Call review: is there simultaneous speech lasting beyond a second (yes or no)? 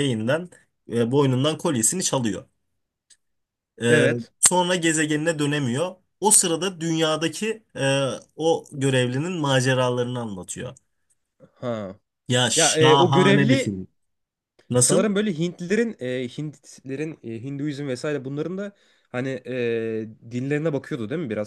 yes